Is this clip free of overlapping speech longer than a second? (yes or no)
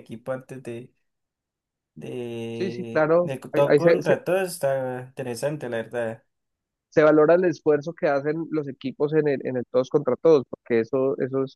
no